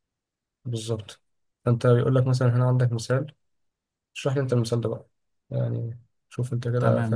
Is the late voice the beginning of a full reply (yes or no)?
yes